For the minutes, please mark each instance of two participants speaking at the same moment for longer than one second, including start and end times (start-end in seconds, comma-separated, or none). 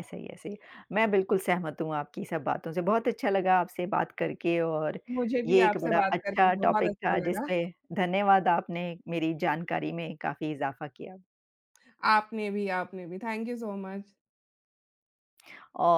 5.5-7.5